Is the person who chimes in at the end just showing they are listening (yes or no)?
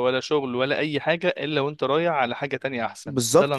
no